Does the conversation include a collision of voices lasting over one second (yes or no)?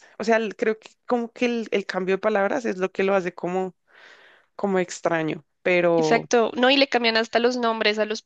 no